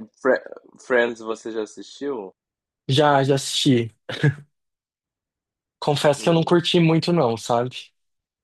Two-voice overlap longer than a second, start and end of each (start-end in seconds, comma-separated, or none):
none